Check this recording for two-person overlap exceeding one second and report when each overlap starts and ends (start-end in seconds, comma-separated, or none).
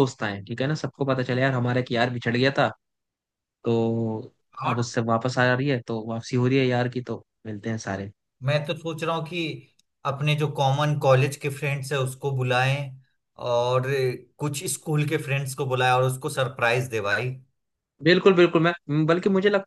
none